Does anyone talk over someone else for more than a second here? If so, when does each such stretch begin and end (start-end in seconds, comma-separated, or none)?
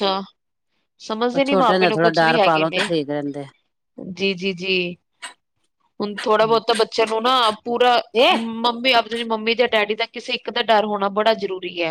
1.3-2.8